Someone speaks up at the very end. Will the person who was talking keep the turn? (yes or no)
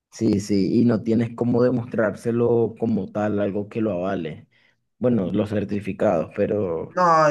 no